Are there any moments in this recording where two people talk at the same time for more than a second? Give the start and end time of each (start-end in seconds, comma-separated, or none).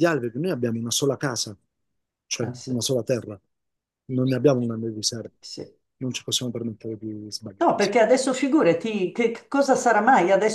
none